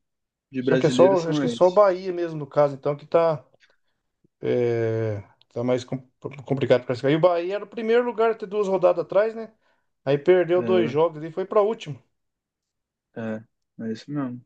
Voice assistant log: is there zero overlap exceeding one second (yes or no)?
no